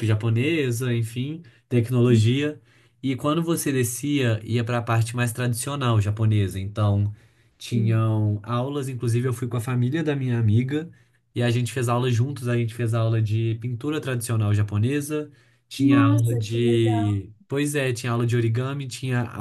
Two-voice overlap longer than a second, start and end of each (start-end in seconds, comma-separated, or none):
15.8-17.2